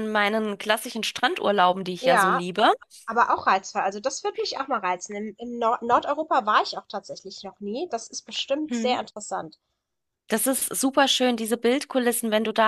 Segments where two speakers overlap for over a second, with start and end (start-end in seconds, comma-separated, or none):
none